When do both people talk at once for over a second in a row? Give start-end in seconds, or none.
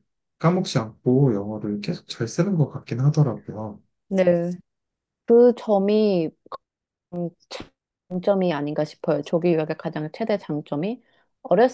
none